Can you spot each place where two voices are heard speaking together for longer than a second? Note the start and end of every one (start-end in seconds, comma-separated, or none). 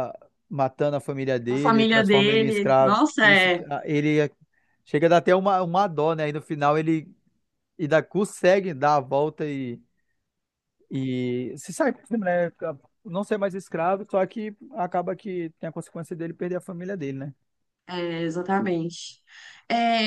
1.5-3.6